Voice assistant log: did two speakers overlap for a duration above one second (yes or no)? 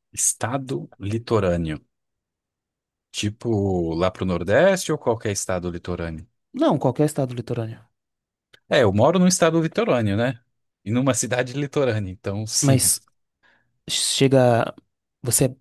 no